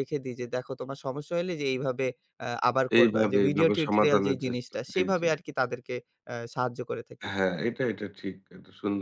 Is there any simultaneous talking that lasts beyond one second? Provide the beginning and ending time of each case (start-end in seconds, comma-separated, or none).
3.0-5.3